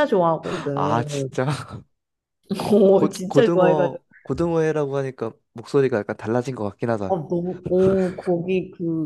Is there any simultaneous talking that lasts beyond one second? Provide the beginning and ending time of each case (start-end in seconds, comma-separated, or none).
2.7-4.0